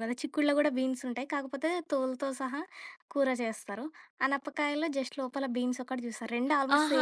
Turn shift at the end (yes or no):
yes